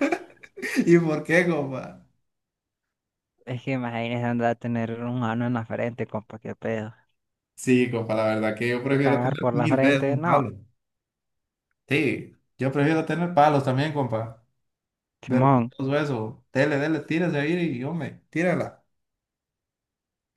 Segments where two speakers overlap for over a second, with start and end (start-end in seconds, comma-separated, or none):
9.0-10.5